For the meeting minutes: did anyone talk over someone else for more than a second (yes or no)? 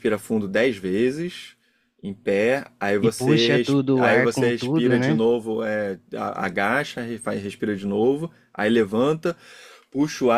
yes